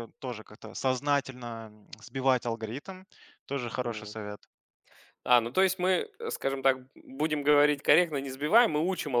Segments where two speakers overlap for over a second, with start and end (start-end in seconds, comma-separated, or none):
none